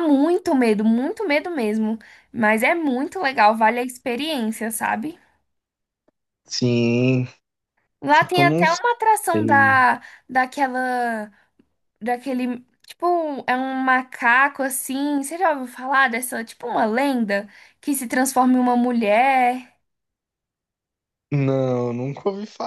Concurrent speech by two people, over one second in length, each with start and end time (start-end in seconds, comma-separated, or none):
8.1-9.8